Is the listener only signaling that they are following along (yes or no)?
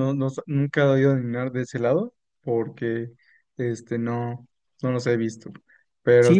no